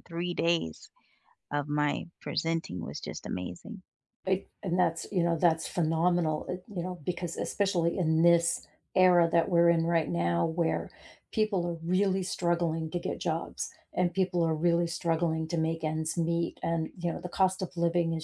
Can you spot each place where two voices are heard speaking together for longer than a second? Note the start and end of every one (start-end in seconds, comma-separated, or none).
none